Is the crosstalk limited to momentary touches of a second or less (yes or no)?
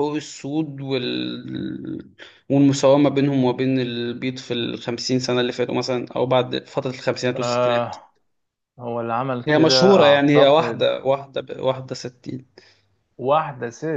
no